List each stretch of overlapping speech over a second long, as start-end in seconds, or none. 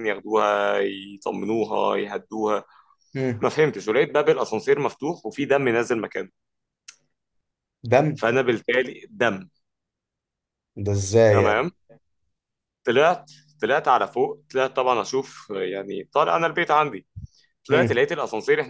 none